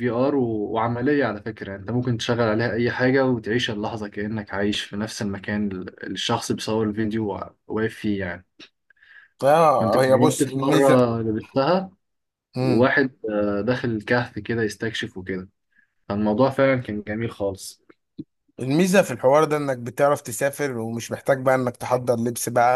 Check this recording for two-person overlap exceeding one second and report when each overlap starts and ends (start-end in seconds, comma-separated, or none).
9.7-11.0